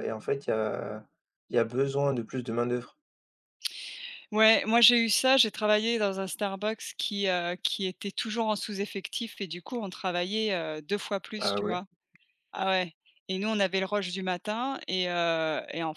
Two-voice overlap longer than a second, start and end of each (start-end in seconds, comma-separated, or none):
none